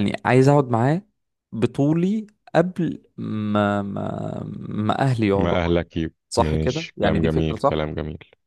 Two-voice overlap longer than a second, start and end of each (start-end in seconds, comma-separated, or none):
6.3-7.9